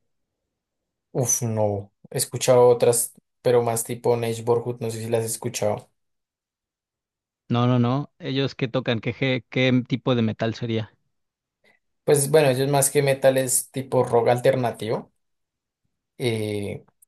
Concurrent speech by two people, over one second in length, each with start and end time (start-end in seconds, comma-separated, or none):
none